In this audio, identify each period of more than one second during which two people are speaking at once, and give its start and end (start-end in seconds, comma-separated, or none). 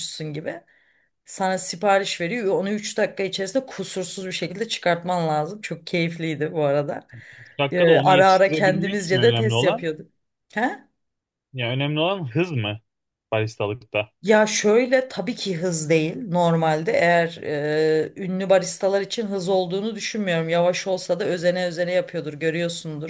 7.7-9.9